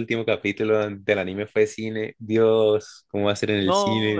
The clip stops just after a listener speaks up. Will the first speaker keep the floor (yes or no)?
no